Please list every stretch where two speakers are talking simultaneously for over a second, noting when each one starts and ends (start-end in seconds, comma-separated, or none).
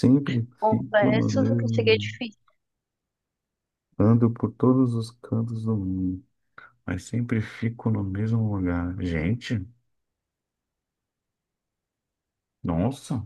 0.6-2.1